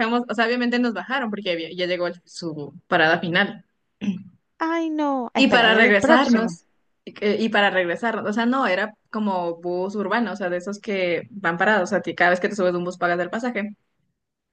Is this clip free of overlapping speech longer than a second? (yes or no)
no